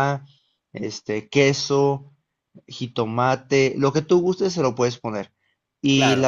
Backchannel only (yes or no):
yes